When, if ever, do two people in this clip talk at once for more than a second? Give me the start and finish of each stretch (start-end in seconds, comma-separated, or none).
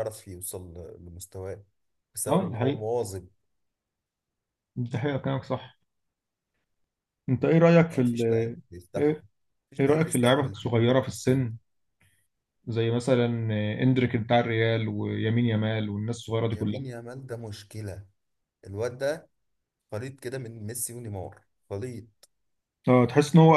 9.8-11.5